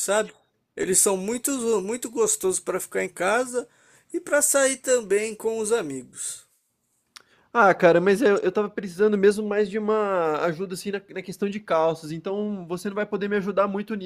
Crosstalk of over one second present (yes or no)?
no